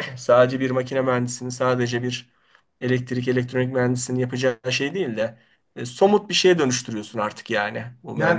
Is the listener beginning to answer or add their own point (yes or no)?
yes